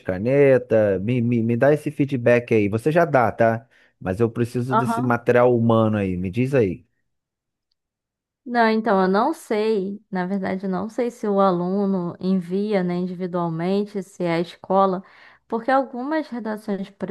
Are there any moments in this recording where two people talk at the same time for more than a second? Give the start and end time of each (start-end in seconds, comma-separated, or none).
none